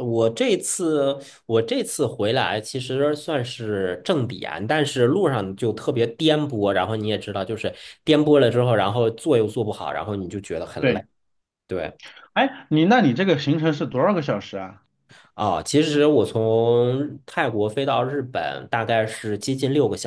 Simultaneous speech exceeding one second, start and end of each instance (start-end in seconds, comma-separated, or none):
none